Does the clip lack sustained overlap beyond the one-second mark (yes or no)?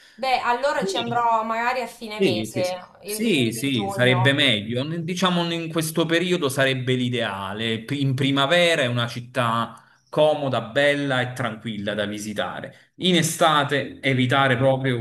no